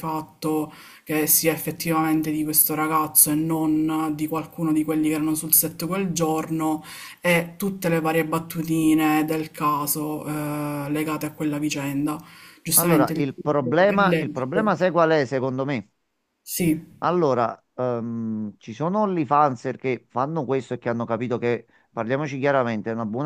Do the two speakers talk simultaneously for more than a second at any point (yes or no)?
yes